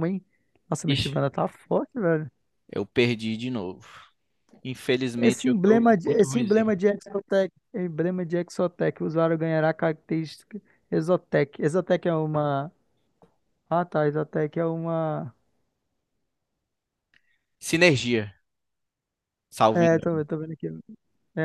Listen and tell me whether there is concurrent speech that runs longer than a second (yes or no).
yes